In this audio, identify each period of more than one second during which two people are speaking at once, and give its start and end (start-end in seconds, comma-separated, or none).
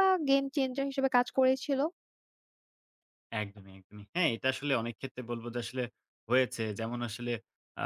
none